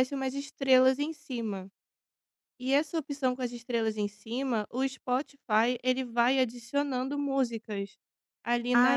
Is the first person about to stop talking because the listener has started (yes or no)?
yes